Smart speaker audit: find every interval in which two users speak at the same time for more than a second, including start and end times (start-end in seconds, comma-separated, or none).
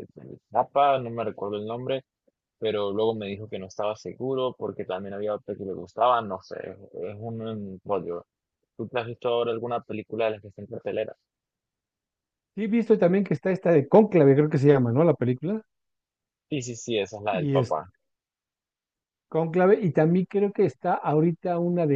none